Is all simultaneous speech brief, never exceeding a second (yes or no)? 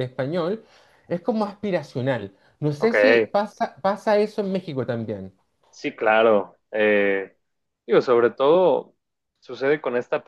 yes